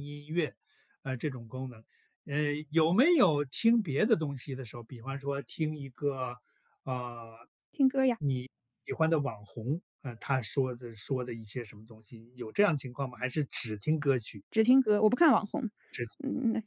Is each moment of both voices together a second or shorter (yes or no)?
yes